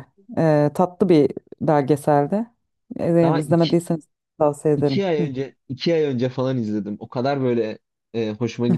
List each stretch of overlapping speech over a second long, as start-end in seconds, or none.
none